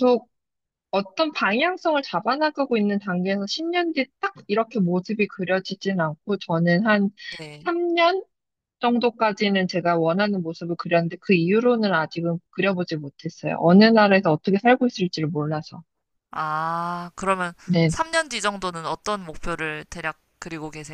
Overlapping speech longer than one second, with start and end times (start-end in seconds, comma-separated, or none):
none